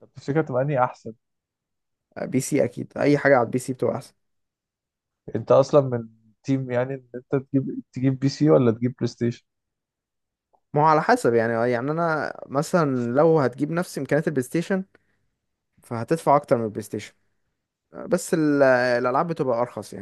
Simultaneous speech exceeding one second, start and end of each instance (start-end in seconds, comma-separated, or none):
none